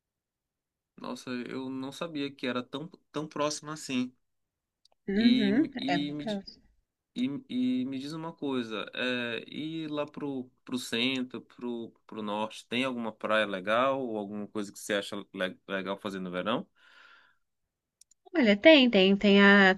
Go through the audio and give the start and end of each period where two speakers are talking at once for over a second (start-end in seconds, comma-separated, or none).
5.2-6.4